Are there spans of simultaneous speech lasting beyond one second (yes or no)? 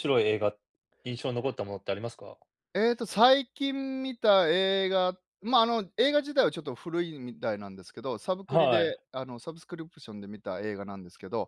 no